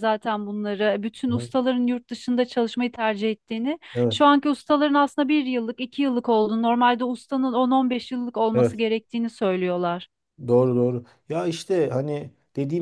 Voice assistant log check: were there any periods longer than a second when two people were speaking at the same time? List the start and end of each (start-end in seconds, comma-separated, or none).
none